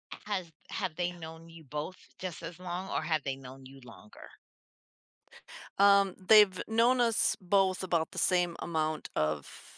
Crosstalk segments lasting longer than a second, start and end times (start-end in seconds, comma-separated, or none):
none